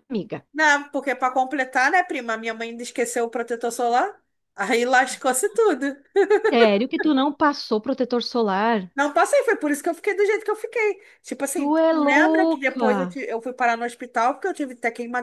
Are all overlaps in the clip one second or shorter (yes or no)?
no